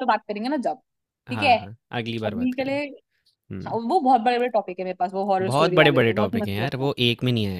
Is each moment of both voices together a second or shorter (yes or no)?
no